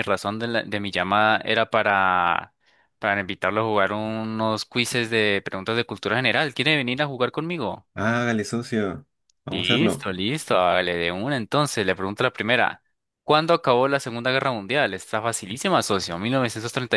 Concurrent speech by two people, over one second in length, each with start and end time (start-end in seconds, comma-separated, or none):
none